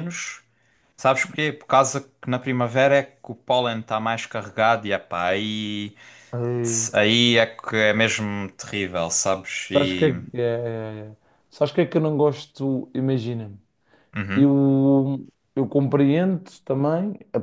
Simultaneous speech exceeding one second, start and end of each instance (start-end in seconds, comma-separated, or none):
none